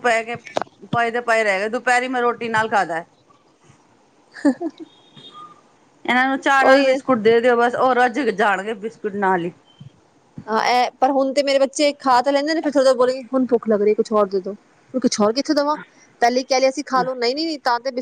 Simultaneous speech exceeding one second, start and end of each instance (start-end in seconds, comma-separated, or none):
none